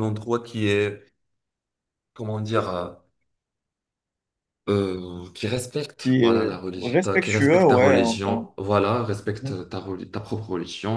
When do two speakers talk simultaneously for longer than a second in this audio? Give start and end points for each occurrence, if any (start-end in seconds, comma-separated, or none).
6.0-8.5